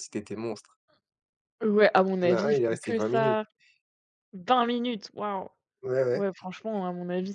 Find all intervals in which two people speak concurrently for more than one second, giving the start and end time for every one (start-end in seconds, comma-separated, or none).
2.2-3.4